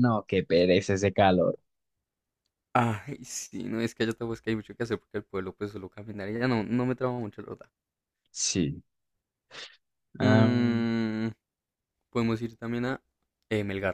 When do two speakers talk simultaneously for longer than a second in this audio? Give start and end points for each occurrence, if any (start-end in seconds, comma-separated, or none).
none